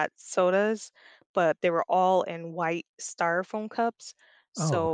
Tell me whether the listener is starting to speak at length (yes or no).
no